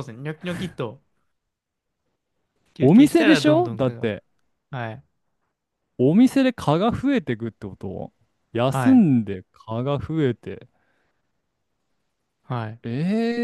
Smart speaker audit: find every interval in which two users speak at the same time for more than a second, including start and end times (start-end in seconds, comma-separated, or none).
2.8-4.1